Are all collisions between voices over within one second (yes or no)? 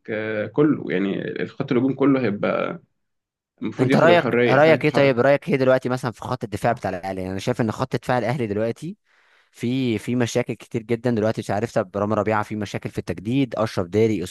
no